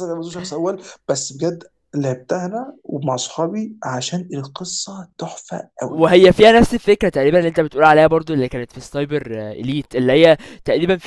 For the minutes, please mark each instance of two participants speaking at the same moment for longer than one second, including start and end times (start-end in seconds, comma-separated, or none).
none